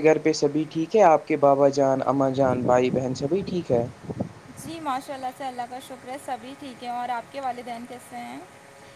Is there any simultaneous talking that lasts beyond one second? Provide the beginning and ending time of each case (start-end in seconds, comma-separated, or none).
none